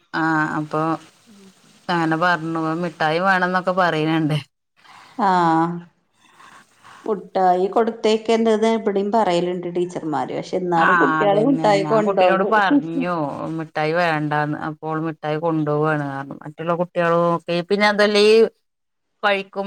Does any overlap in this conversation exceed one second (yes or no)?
yes